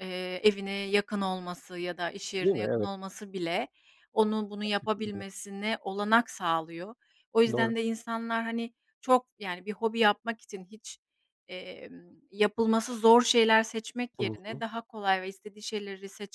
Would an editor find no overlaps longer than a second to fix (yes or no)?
yes